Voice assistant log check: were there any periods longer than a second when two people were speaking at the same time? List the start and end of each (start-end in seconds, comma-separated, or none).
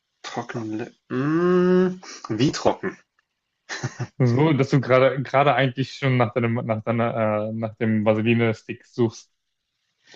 none